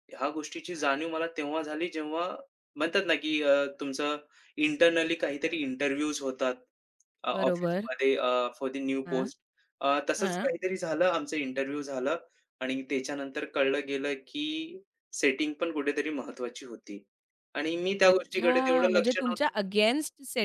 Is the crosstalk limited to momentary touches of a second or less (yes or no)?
no